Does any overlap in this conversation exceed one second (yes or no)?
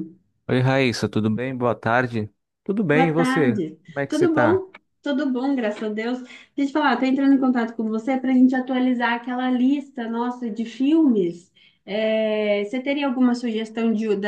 yes